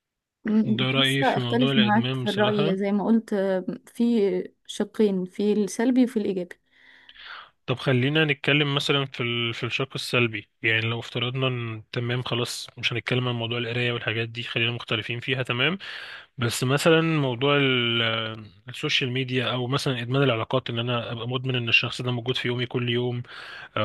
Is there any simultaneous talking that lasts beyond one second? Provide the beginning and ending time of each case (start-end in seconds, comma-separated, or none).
0.7-2.8